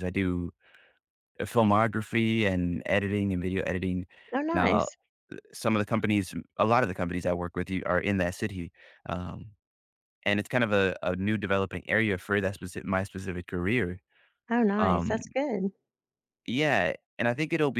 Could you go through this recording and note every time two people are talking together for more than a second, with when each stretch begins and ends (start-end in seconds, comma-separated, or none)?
none